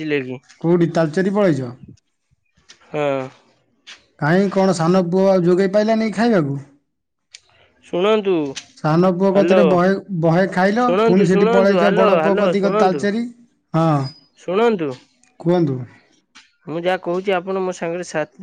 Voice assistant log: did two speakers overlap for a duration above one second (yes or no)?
yes